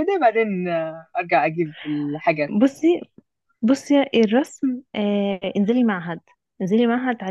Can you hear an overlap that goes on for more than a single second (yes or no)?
no